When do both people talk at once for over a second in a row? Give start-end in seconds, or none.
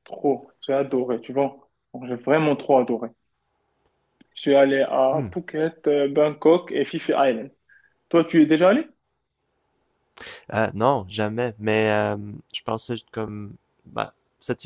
none